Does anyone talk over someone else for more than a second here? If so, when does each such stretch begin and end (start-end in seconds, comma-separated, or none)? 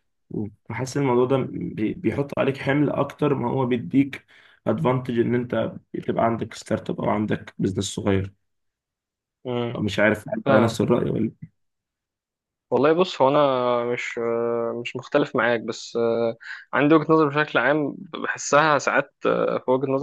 none